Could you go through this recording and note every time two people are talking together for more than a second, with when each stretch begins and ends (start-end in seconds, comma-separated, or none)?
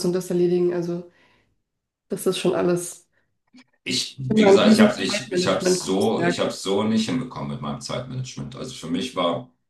4.3-6.4